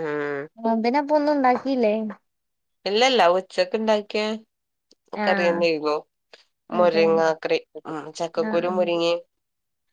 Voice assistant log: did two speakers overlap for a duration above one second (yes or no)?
no